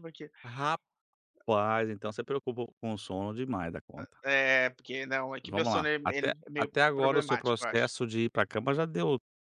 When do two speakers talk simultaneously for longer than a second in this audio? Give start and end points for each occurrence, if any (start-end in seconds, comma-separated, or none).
5.4-7.9